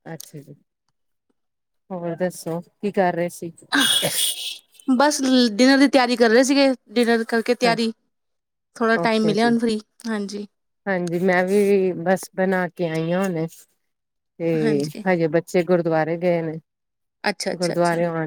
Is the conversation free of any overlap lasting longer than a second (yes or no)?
yes